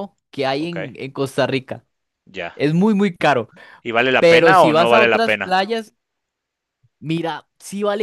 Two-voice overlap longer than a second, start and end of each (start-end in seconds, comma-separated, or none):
4.2-5.6